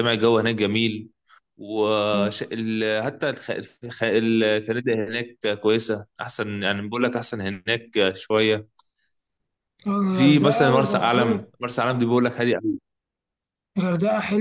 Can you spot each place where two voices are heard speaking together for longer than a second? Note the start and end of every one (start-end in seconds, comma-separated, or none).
10.1-11.4